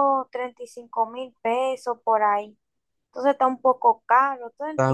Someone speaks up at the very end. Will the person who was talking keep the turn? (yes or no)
no